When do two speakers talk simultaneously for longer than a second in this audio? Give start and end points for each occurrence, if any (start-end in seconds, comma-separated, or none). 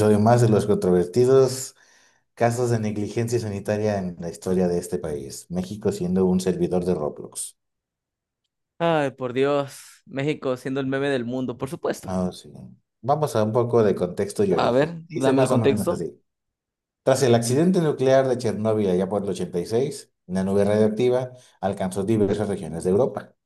14.5-16.1